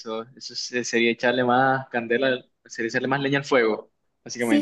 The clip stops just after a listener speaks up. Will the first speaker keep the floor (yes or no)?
no